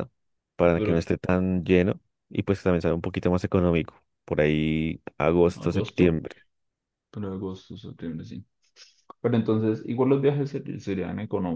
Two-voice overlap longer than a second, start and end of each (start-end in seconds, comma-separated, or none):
none